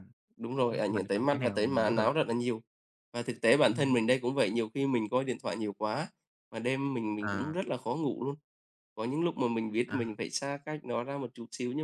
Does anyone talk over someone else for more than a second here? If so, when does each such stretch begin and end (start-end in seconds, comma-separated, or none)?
0.7-2.1